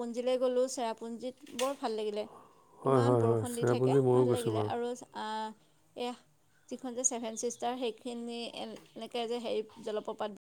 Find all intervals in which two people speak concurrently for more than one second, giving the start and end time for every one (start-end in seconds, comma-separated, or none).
2.9-4.7